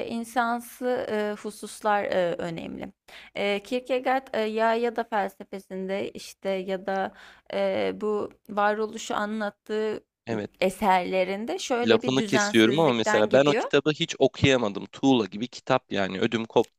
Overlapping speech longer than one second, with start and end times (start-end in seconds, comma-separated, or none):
11.8-13.7